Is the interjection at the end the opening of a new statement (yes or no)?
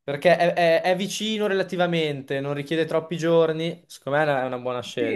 yes